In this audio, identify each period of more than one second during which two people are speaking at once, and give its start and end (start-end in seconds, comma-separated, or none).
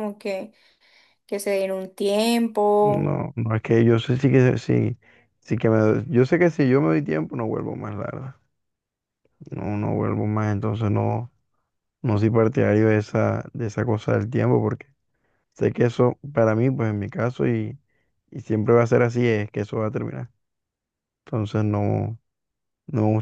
none